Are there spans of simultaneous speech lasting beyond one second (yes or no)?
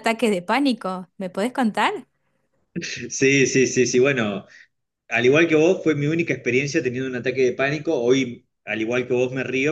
no